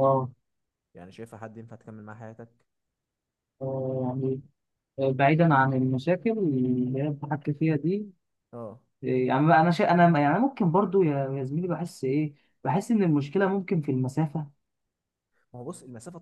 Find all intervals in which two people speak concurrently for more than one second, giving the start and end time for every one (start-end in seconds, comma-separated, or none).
none